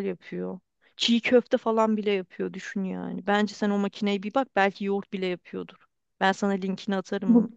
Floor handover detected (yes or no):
no